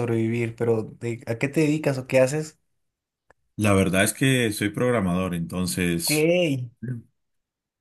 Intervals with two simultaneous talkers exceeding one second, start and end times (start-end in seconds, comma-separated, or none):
none